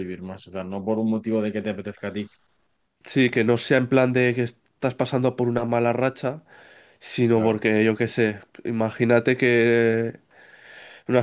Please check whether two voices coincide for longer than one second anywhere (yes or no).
no